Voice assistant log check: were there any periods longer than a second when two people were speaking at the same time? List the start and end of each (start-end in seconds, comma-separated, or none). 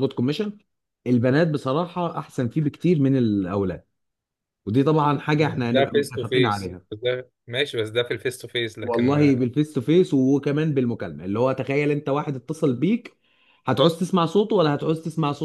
5.4-6.8